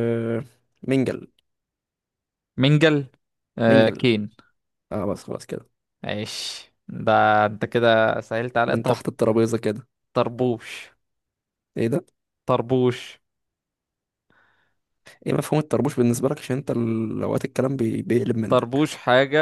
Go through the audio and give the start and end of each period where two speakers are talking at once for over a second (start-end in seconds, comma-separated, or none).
none